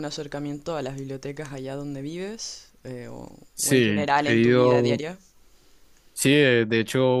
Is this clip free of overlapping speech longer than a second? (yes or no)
no